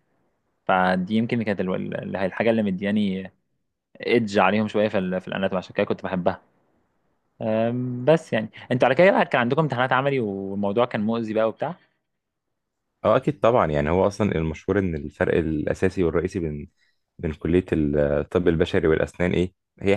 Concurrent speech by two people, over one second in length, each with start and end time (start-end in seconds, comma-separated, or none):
none